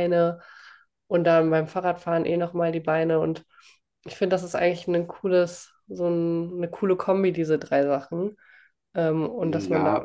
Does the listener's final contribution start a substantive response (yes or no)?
yes